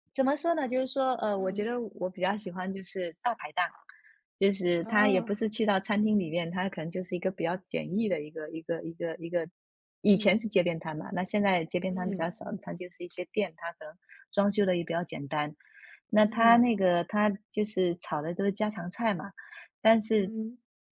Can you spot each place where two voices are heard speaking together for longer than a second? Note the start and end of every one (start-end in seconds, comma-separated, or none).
none